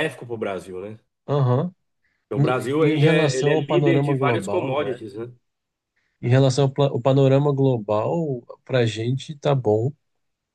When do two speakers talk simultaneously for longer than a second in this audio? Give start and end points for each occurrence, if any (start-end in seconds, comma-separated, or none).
2.3-5.0